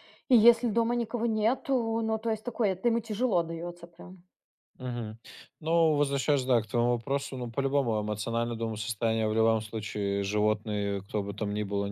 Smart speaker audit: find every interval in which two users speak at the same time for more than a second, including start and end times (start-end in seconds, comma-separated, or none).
none